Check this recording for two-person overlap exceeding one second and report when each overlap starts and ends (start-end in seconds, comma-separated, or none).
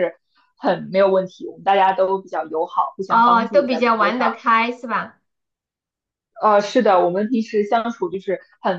3.1-4.3